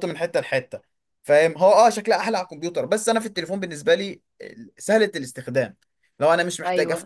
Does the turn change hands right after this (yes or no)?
no